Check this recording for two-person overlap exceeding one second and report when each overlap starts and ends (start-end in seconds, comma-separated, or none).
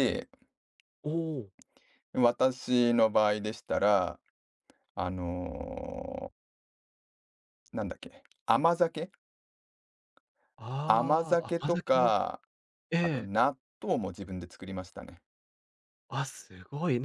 10.8-12.2